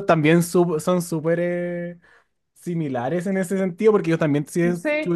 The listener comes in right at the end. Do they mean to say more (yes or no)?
no